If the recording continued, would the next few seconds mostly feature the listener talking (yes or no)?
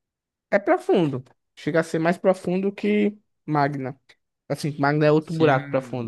yes